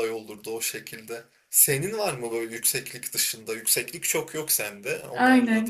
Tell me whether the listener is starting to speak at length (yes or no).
yes